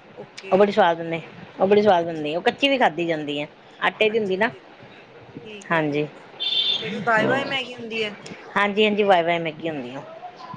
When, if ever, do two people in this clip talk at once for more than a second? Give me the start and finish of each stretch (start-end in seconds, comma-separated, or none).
none